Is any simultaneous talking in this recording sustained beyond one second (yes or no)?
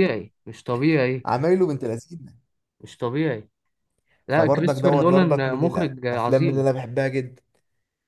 yes